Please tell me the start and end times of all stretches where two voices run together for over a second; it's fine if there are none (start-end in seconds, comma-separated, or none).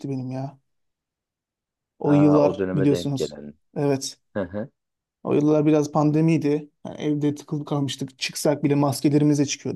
2.0-3.4